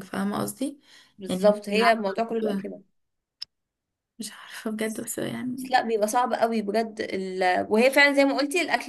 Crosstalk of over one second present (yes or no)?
yes